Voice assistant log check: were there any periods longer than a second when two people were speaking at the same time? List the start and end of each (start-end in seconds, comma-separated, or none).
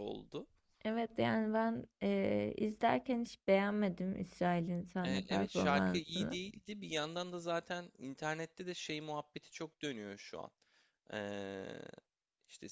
5.0-6.4